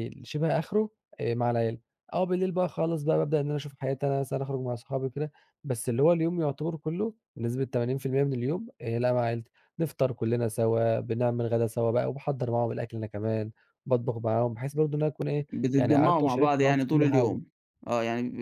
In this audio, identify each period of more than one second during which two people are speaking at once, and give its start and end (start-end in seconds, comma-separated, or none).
15.5-17.4